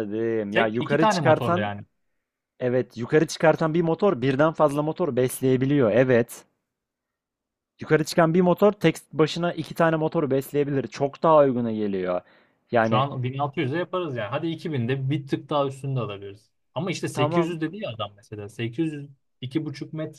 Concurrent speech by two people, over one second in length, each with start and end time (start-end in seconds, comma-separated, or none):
0.5-1.7